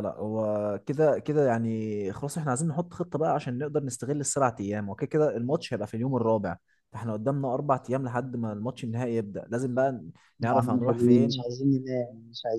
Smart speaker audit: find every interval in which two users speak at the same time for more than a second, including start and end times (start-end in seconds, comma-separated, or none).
10.4-11.6